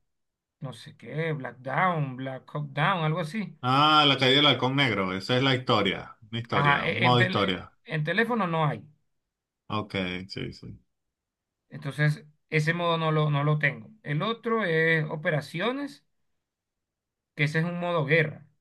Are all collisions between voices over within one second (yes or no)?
no